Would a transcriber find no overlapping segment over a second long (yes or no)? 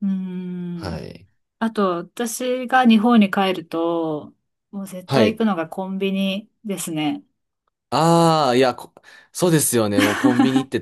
yes